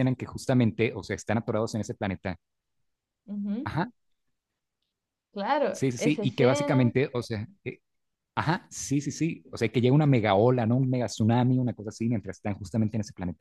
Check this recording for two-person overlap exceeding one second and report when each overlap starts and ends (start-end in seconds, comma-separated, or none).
5.7-6.9